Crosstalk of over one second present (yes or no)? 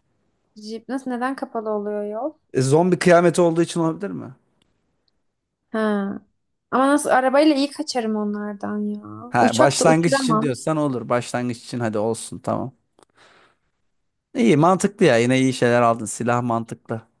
yes